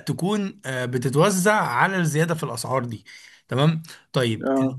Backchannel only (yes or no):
yes